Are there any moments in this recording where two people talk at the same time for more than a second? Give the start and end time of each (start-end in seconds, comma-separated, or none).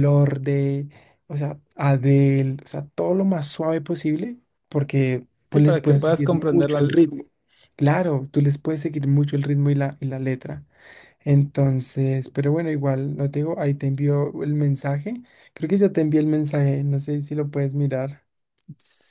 5.5-6.8